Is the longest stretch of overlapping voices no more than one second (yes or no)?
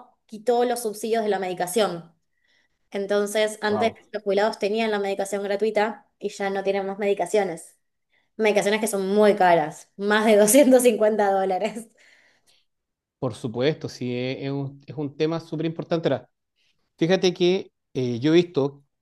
yes